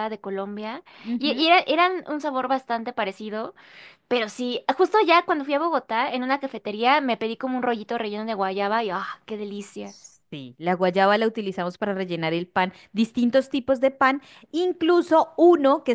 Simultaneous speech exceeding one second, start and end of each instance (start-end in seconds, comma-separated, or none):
none